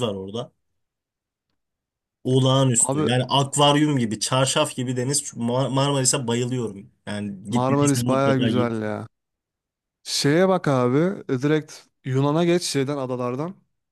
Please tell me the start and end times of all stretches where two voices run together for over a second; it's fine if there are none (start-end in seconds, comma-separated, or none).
7.5-8.8